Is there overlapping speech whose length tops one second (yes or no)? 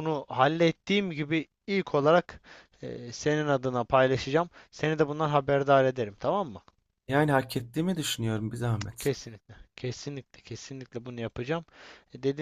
no